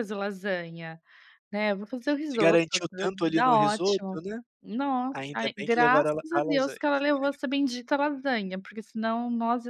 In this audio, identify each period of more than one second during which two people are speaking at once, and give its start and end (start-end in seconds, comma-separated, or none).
2.3-4.2, 5.1-6.8